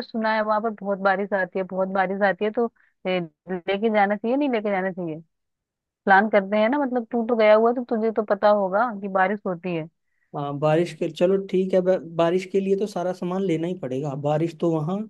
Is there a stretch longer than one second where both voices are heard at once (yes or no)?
no